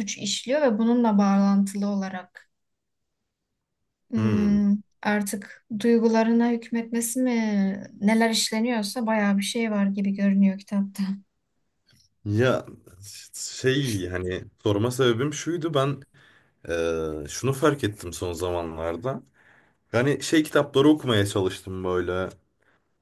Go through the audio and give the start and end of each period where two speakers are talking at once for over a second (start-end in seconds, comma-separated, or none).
none